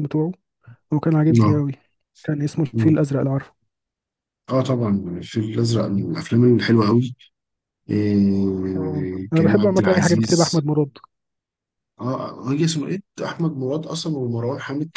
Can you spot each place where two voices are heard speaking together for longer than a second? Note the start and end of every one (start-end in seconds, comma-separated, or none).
8.8-10.6